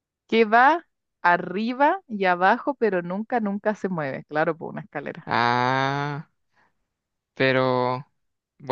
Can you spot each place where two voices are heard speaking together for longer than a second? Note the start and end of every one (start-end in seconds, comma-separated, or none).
none